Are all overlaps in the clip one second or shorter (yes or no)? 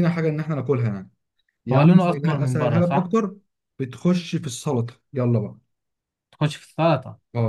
no